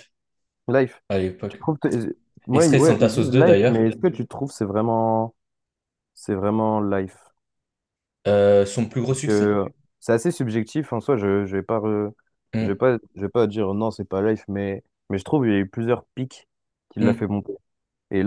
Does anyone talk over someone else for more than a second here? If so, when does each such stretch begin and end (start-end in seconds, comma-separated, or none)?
2.5-3.9